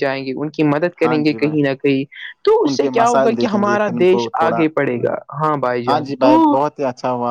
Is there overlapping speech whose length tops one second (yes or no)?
yes